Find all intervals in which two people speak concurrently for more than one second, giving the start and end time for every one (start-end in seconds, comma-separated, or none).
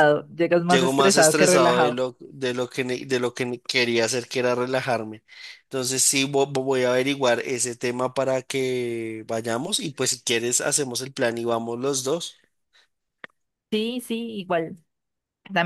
0.7-2.0